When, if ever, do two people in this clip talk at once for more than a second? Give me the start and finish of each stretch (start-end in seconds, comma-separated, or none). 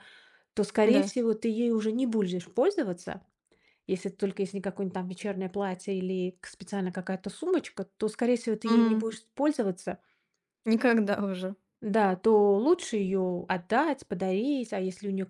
none